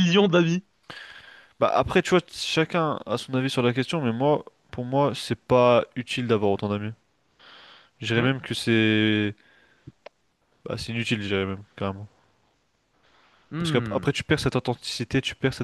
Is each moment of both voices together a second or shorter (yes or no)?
yes